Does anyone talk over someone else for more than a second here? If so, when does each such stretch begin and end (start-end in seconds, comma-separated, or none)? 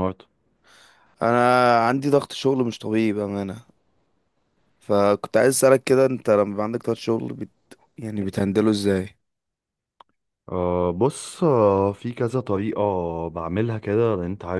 none